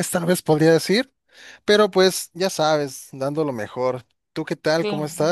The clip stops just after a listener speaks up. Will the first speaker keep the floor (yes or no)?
no